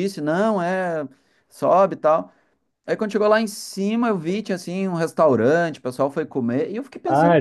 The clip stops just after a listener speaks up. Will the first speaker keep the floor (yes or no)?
no